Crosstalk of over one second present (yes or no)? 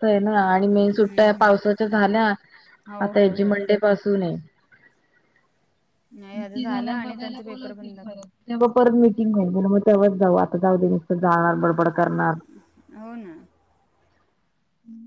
yes